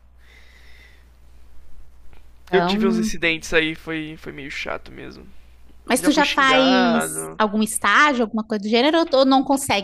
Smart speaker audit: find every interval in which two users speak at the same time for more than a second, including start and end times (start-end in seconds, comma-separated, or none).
6.0-7.4